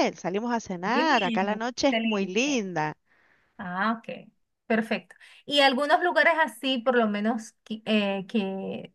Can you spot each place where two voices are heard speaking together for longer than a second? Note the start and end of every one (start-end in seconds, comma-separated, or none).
0.8-2.6